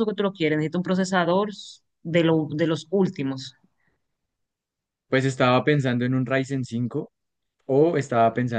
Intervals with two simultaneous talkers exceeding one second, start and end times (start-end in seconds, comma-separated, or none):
none